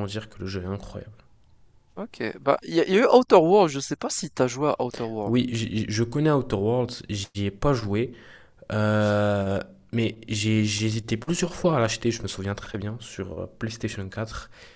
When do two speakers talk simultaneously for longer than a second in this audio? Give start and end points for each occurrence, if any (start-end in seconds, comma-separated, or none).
none